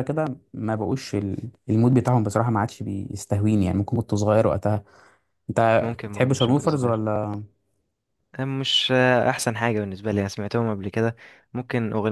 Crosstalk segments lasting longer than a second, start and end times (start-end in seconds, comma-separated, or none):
5.8-7.0